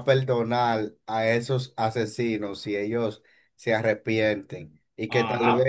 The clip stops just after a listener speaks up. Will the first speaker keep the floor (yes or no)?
yes